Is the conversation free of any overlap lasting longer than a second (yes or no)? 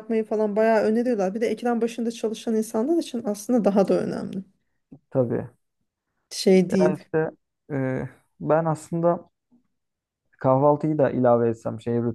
yes